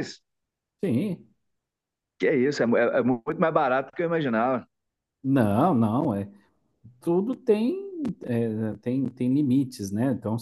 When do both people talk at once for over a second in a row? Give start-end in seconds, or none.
none